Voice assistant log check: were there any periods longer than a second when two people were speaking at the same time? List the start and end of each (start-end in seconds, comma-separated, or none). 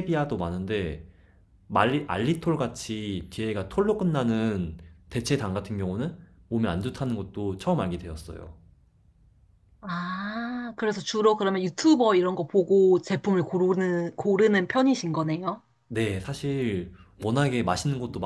none